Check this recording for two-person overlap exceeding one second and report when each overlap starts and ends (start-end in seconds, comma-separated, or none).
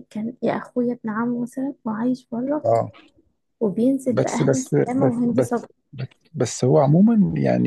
4.1-5.7